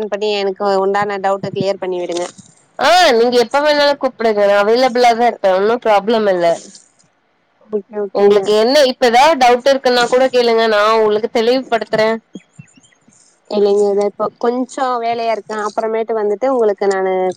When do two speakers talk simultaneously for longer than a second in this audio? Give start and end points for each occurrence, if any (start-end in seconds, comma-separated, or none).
none